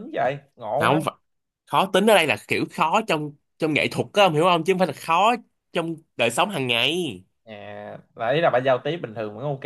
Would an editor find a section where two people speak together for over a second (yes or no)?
no